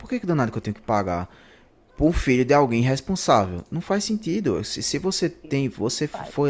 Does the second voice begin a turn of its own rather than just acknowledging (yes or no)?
no